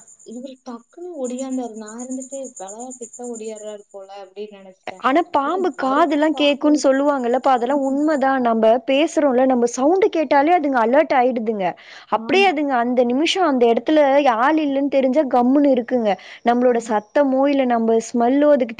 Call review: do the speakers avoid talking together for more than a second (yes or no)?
yes